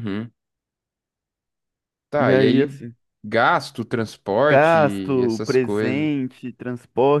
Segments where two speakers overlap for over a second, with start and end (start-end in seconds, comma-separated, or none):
4.5-6.1